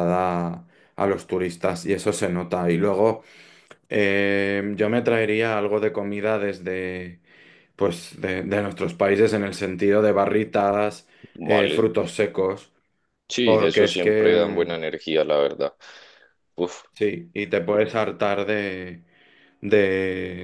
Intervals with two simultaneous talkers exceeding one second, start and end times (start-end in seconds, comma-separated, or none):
13.4-14.7